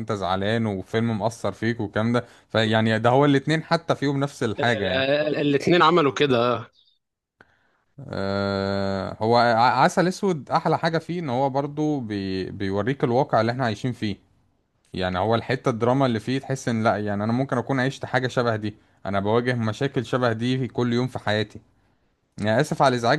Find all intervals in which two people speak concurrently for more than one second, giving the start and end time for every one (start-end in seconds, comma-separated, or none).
none